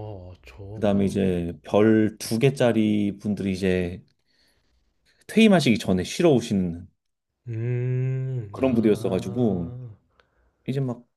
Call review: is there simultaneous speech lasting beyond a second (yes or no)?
yes